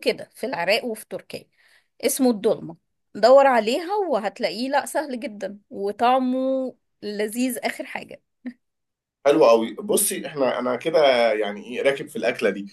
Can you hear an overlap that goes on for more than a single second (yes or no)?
no